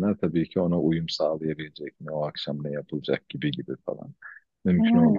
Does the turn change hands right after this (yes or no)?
no